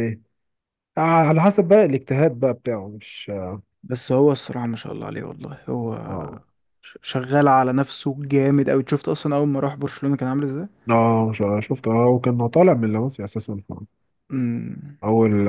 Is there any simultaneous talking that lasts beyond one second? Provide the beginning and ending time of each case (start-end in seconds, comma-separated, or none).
none